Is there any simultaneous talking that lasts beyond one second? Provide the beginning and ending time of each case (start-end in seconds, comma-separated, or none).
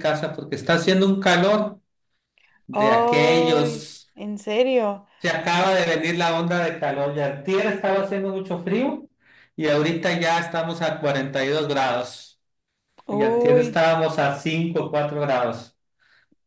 2.7-4.1